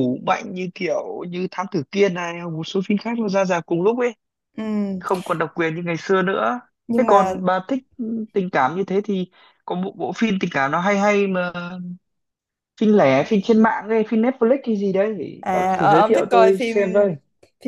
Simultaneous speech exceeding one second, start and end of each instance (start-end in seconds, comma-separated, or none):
15.4-16.8